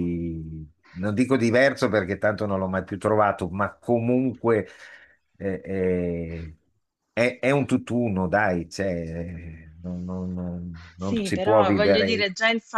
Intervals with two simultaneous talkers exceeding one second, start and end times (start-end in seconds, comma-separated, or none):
11.0-12.3